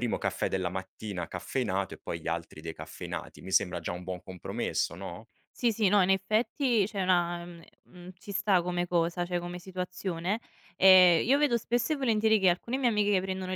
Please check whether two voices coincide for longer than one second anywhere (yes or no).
no